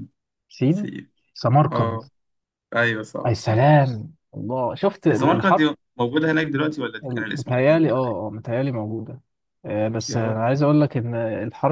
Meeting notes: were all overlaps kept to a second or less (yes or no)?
no